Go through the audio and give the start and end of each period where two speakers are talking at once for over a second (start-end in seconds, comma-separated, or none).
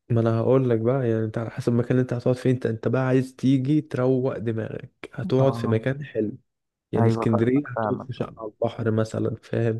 7.0-8.3